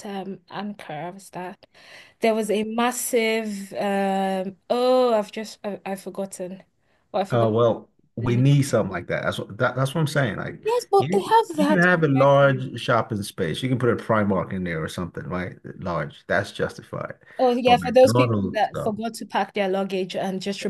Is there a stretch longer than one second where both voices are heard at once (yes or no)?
yes